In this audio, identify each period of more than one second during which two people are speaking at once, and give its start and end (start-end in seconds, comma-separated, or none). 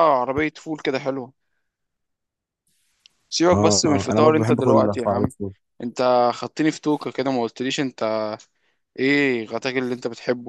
3.5-5.3